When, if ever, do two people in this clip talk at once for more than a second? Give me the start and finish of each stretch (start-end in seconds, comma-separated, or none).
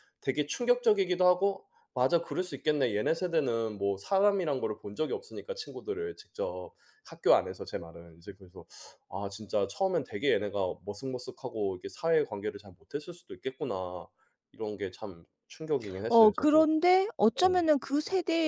none